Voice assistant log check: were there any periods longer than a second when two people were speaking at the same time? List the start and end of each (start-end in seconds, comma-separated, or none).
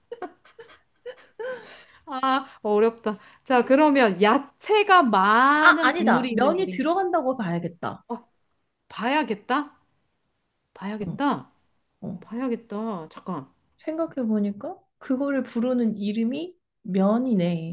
5.6-6.9